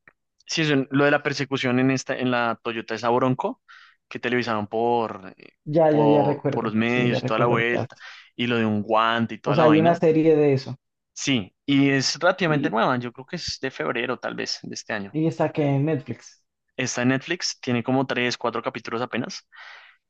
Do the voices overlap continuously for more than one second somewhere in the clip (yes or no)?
yes